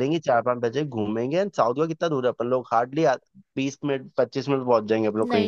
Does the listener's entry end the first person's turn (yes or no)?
yes